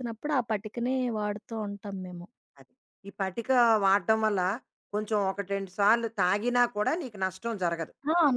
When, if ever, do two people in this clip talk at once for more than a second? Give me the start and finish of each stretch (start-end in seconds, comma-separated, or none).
none